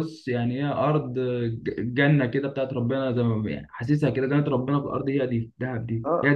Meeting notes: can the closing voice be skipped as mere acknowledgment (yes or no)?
no